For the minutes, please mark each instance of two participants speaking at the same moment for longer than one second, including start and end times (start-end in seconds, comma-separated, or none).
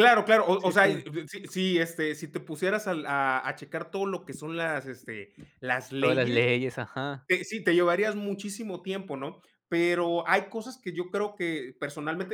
none